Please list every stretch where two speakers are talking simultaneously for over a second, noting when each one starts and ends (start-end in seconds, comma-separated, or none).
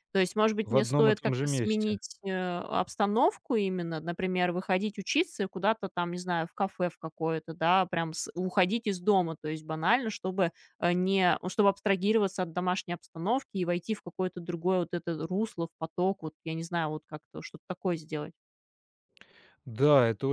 0.6-2.0